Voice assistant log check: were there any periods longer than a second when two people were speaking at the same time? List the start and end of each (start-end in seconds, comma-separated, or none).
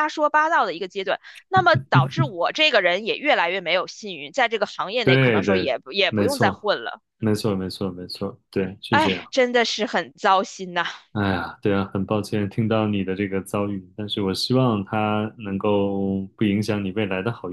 5.0-6.8